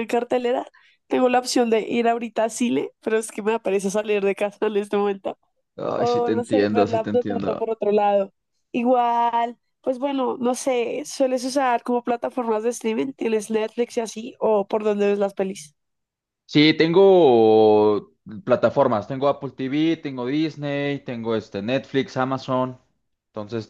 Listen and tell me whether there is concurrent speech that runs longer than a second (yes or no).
yes